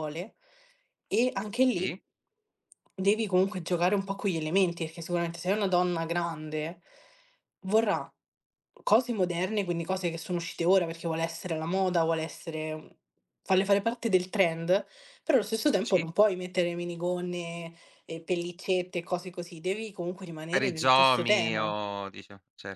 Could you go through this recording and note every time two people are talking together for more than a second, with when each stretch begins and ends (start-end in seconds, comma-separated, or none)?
20.5-21.7